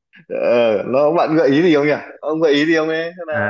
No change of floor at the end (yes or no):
no